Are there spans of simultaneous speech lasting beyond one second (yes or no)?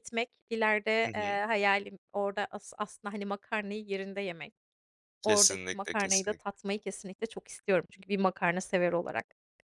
yes